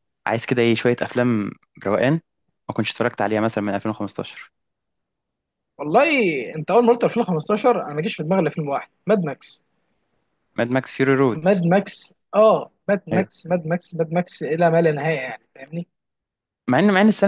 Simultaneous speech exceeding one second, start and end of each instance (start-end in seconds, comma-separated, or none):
none